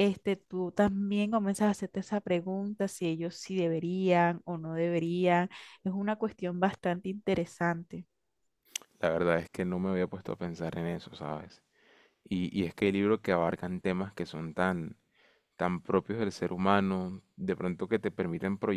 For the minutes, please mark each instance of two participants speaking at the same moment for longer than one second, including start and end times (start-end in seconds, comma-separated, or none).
none